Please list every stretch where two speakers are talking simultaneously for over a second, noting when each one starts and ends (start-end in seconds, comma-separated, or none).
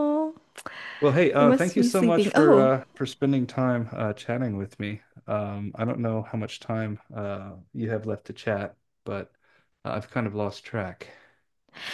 1.4-2.7